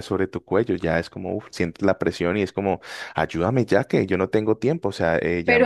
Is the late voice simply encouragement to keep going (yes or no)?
no